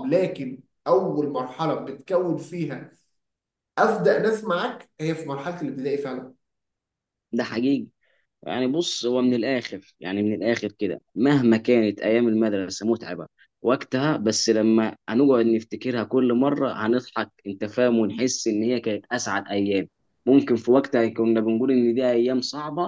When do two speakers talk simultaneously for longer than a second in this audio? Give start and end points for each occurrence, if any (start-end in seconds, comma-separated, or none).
none